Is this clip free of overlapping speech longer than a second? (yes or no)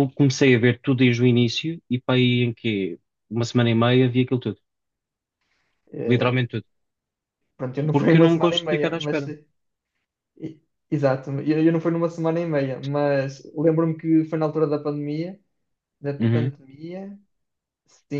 no